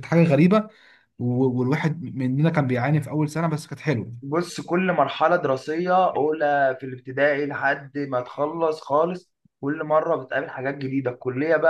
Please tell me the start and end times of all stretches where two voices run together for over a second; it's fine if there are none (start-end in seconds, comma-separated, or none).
none